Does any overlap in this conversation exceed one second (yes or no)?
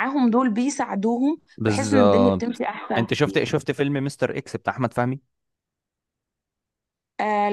yes